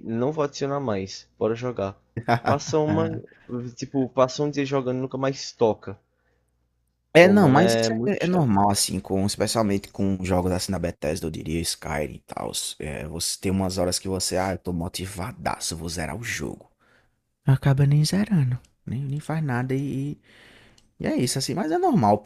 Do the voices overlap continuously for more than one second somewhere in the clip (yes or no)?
yes